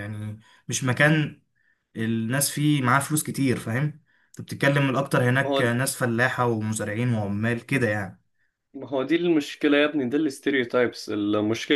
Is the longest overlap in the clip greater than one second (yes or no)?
no